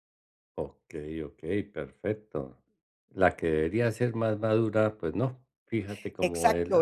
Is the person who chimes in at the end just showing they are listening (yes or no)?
no